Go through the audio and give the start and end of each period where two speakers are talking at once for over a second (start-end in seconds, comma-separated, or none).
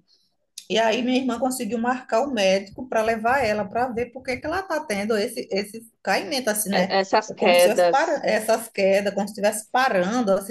6.7-8.3